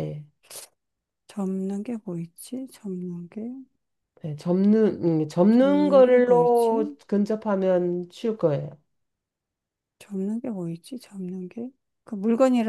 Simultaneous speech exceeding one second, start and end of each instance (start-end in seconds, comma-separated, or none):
5.5-6.8